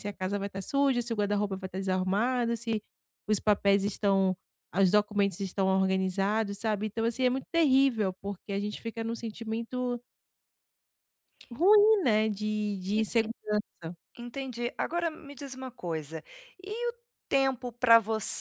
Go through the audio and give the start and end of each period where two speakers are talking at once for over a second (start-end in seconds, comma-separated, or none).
none